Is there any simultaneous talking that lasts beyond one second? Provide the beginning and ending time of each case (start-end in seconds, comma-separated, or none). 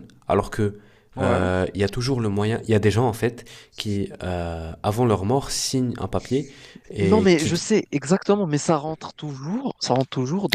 none